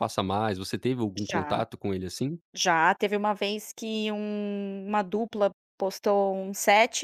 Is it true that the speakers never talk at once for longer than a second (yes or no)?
yes